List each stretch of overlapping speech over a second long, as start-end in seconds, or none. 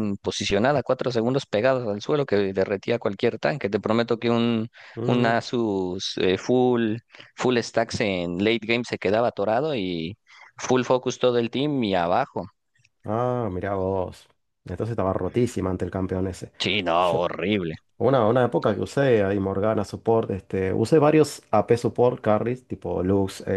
none